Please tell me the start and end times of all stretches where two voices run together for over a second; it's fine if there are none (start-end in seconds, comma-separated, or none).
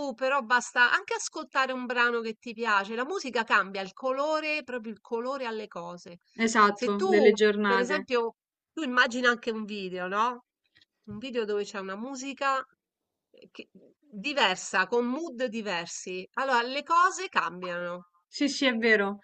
6.7-8.1